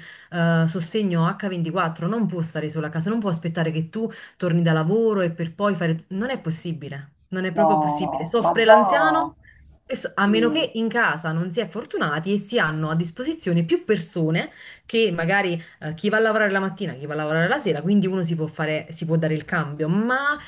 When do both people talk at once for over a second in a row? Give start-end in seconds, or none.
7.5-9.3